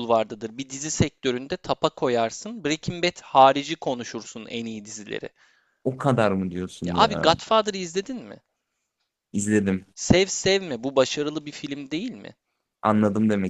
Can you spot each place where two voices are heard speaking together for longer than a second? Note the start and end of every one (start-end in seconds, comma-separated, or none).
none